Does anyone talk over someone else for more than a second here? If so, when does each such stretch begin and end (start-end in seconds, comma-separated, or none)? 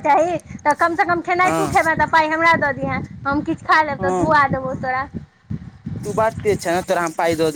none